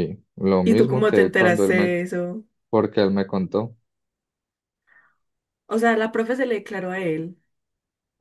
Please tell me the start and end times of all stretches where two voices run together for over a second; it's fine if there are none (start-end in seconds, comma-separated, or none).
0.6-1.9